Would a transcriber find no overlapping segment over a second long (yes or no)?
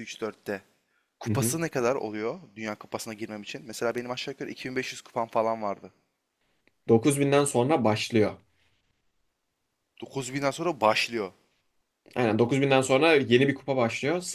yes